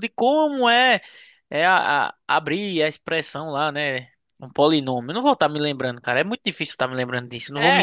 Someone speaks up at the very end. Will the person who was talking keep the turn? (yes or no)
no